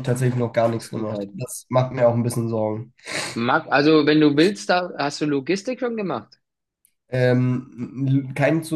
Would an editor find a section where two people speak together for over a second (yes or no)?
no